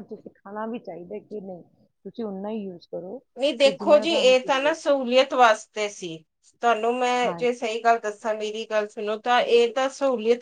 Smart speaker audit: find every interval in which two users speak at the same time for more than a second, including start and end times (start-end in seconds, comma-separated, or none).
3.4-4.9